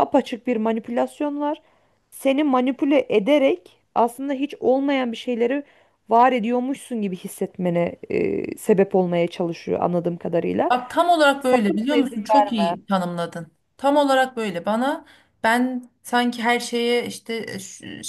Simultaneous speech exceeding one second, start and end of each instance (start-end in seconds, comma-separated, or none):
11.4-12.7